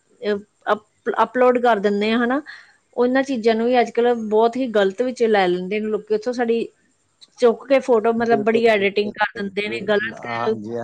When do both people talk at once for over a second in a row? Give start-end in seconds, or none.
8.2-9.8